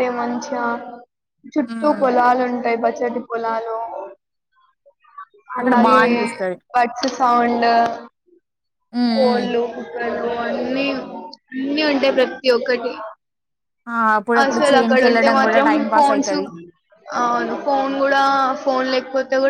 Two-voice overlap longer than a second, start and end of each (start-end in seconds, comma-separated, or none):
14.4-16.4